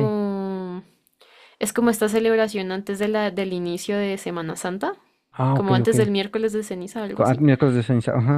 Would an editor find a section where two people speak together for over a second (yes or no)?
no